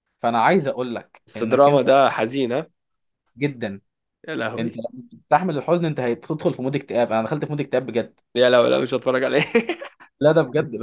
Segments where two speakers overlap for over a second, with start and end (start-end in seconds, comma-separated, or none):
none